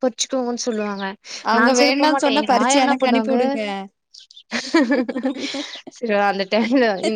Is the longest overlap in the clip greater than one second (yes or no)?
yes